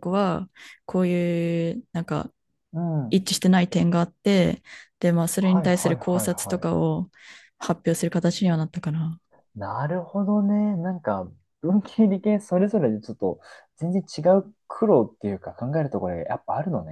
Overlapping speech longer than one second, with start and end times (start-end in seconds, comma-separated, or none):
5.4-6.7